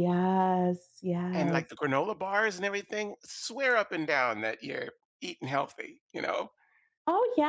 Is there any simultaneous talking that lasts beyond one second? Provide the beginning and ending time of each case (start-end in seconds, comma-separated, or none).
none